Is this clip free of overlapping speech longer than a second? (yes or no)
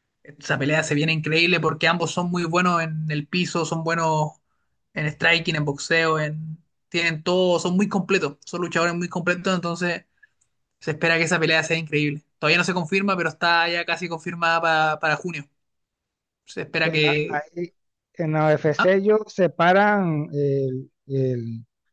yes